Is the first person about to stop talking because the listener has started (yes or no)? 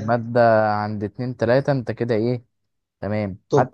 no